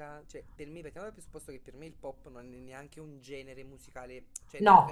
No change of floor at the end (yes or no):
yes